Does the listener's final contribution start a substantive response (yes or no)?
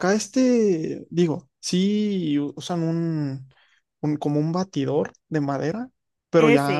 no